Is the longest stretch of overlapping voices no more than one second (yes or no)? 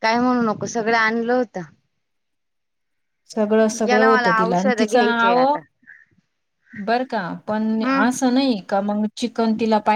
no